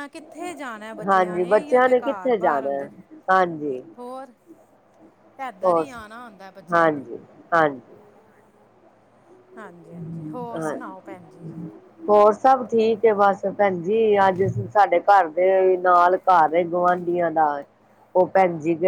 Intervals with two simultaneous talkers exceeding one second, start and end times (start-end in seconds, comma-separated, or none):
1.1-2.9